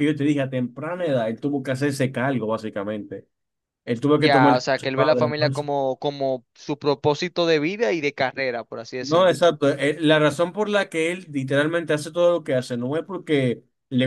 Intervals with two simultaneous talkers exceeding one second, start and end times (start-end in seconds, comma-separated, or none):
4.2-5.7